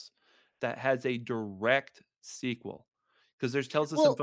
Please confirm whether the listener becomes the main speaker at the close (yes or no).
no